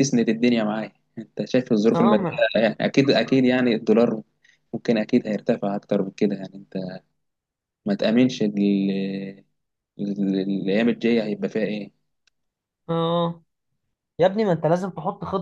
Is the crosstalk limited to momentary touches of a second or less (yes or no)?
yes